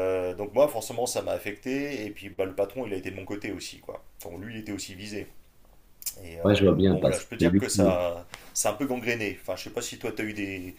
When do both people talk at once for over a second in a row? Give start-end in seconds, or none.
6.4-8.0